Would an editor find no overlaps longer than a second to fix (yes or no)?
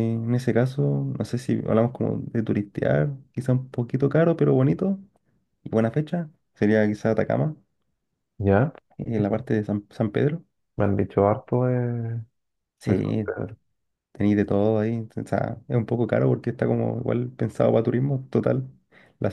yes